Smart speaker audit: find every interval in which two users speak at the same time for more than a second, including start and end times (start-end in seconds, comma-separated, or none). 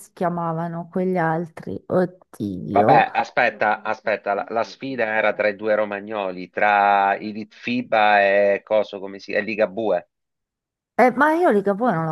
none